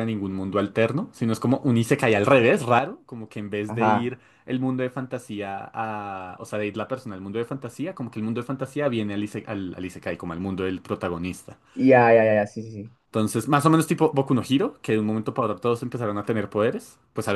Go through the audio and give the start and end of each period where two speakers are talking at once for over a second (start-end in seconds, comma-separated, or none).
none